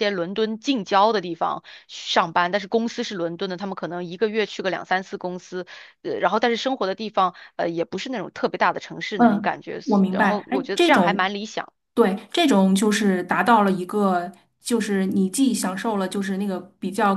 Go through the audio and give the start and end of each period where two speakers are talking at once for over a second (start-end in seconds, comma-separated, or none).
9.2-11.3